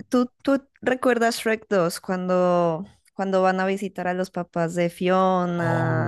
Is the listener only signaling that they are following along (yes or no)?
no